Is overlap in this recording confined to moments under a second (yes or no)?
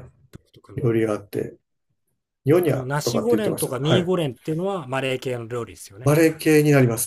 no